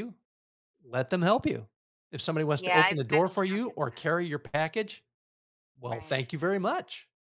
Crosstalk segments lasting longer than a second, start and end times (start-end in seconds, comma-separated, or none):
2.6-4.0